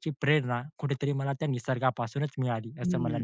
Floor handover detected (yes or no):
yes